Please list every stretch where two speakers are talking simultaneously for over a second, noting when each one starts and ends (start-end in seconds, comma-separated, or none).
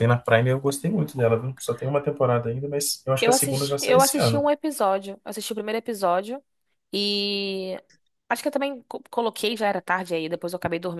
3.2-4.5